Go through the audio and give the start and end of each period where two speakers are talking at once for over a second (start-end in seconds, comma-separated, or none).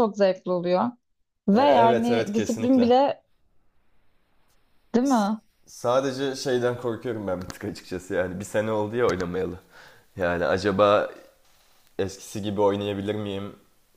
1.5-2.9